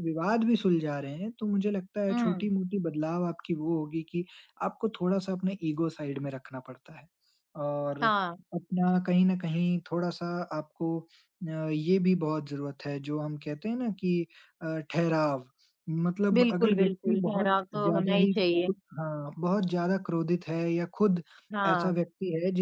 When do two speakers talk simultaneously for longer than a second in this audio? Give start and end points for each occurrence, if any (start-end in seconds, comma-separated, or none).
16.4-18.7